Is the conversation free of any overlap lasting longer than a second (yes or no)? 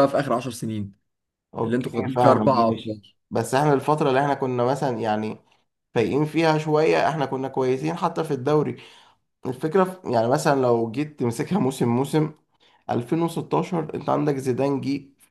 no